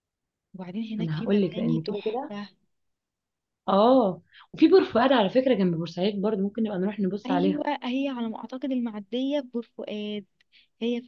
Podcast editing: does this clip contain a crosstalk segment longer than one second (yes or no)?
yes